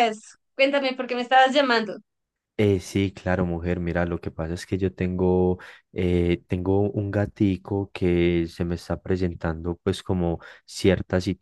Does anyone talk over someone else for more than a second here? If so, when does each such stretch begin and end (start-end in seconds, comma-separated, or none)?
none